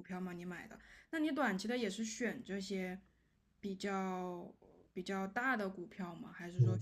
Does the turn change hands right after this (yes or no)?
yes